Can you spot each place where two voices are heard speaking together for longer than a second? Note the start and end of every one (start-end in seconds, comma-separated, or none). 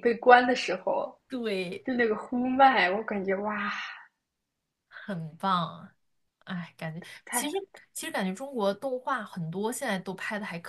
none